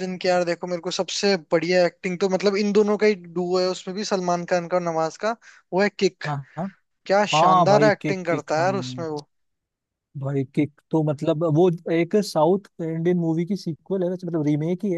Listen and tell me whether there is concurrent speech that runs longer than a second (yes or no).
yes